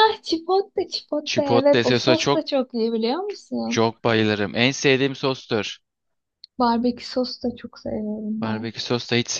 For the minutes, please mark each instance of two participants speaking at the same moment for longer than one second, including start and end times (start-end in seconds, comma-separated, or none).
1.2-2.5